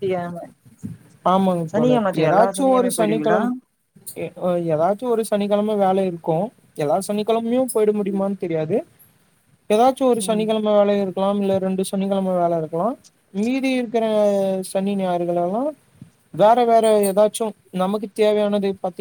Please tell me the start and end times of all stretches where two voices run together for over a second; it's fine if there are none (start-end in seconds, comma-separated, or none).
1.7-3.4